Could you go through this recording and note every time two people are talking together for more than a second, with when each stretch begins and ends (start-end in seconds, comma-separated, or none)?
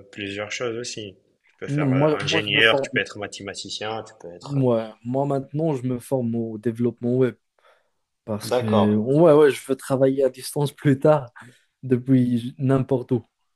1.7-3.0